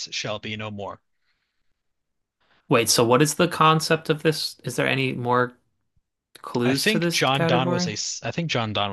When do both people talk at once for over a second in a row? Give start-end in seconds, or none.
6.7-7.9